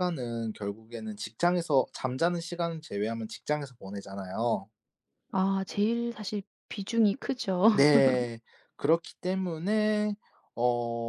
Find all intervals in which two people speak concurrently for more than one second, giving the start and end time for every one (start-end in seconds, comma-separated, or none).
none